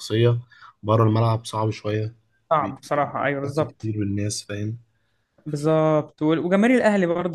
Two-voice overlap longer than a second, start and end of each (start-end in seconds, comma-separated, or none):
2.6-3.9